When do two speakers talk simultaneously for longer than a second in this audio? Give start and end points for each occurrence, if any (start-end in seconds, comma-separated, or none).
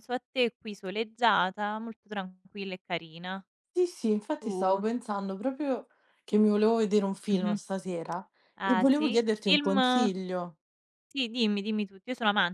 8.6-10.1